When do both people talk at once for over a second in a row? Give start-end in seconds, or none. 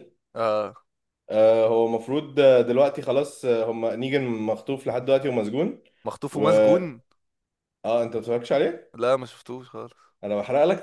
none